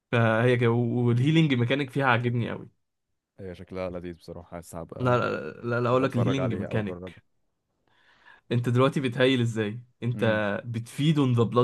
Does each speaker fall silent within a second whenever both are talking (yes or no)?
no